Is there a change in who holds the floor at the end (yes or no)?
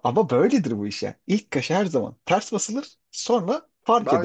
yes